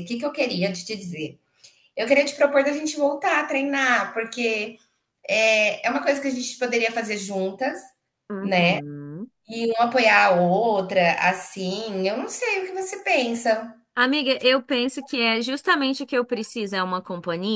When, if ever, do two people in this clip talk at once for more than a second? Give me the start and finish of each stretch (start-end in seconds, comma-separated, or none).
none